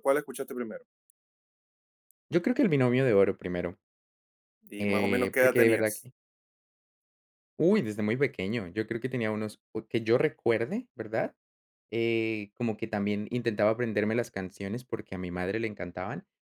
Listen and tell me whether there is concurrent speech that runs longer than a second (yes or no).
yes